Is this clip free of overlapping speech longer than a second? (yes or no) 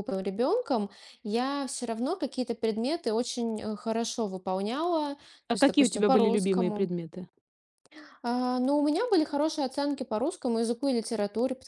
no